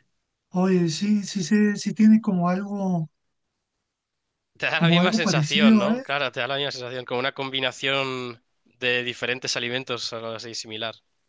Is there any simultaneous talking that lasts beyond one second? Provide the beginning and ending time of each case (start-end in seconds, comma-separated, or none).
4.7-6.0